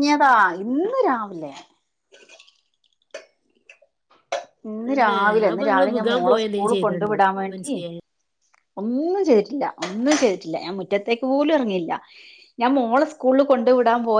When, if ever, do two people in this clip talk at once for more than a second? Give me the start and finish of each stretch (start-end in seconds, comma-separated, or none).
4.9-7.7